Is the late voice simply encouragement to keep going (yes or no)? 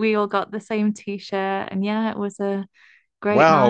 no